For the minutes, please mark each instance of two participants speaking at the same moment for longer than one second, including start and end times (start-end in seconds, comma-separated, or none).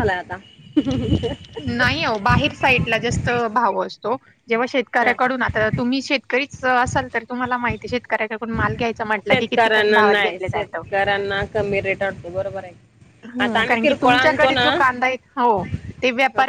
13.4-14.8